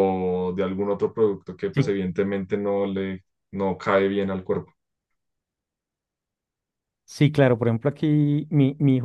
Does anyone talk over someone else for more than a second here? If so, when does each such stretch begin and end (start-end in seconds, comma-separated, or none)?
none